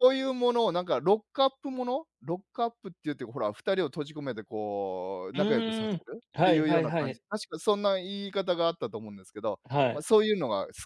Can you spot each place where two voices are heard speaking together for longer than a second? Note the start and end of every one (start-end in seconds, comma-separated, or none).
5.3-7.2